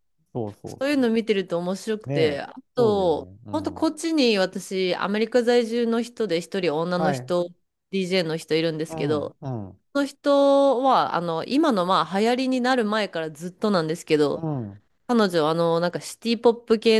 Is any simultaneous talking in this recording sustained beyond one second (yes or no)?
yes